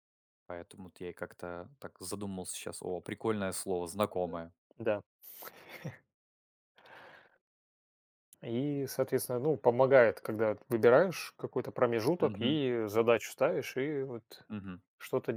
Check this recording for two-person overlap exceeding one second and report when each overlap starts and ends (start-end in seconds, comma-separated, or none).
none